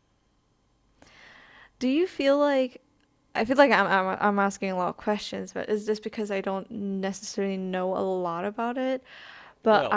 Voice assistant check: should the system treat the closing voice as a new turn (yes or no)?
yes